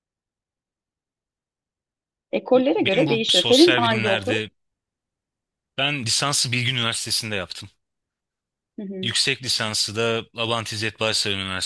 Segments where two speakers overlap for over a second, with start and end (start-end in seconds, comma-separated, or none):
2.5-4.3